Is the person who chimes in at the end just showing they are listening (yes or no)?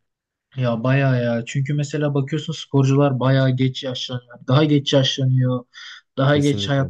yes